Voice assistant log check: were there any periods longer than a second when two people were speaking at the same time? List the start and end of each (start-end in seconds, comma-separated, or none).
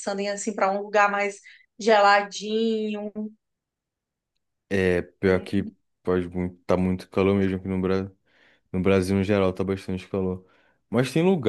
none